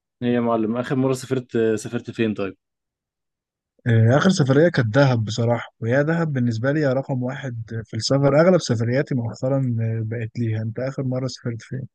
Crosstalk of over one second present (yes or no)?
no